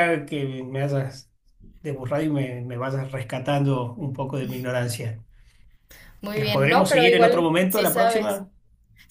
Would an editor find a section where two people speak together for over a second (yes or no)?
yes